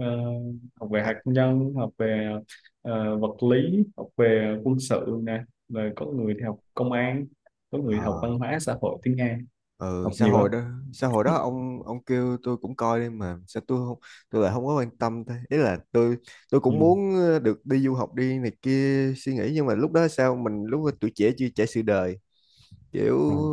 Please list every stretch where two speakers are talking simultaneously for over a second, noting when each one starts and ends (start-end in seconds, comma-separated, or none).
none